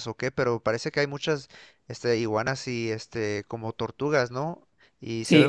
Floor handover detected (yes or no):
yes